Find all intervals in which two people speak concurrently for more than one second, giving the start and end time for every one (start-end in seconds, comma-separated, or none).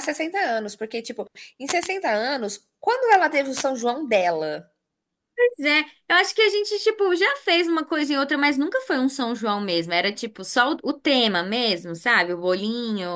none